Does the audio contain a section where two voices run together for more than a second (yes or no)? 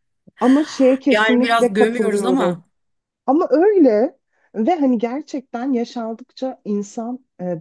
yes